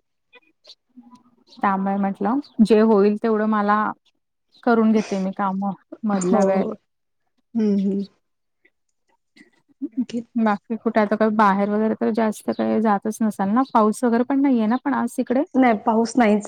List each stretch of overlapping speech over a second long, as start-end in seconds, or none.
none